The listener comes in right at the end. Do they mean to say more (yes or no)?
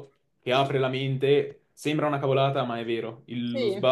no